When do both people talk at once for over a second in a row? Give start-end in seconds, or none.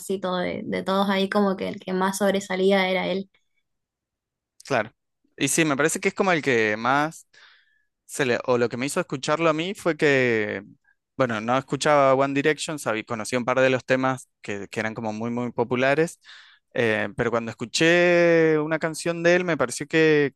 none